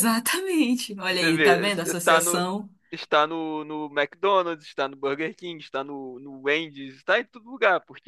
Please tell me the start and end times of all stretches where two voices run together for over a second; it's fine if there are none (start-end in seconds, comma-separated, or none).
1.1-2.5